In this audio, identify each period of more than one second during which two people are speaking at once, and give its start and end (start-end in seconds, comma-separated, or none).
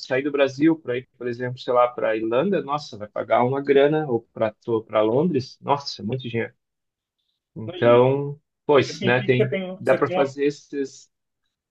8.8-10.3